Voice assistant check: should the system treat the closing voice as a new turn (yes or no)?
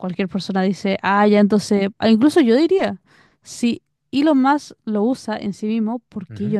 yes